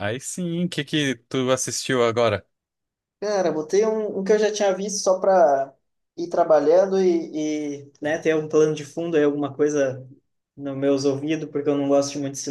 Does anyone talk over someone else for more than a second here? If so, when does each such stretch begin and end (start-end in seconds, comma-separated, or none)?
none